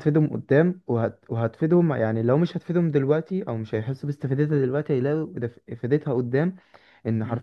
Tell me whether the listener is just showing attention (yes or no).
yes